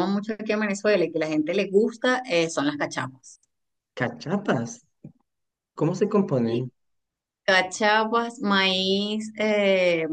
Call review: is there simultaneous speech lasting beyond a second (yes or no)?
no